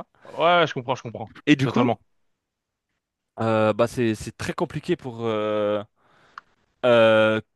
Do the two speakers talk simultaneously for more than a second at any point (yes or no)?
no